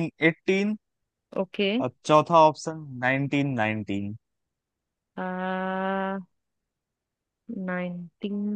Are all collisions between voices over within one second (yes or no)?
yes